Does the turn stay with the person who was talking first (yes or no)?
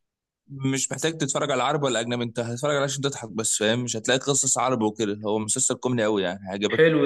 no